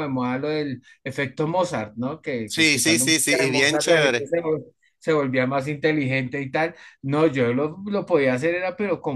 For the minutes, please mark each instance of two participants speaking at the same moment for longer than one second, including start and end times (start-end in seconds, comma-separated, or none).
2.5-4.3